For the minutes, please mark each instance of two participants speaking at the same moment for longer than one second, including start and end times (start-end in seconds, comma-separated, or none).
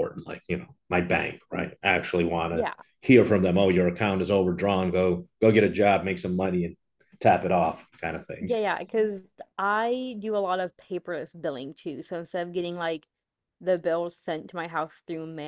none